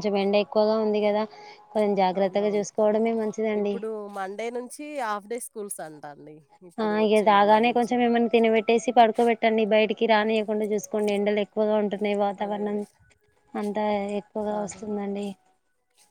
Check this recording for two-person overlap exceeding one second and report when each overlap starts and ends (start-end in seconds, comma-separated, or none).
none